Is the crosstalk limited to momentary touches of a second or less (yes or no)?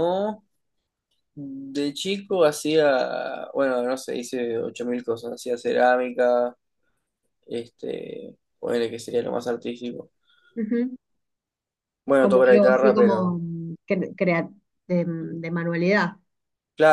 no